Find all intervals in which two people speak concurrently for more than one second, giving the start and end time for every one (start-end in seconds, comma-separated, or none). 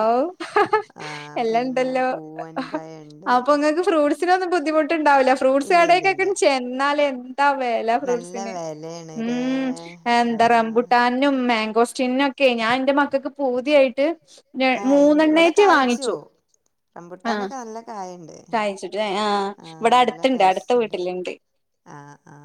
none